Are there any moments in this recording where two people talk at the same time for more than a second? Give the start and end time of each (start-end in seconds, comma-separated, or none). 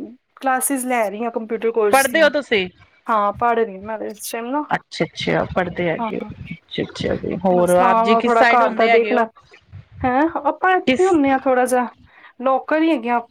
7.6-9.2